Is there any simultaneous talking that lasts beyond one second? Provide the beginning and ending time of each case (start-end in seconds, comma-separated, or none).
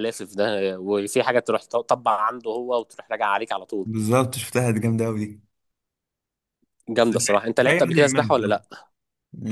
7.0-8.6